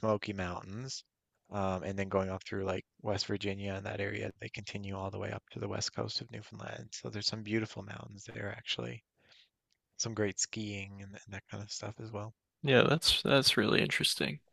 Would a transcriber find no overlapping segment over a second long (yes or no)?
yes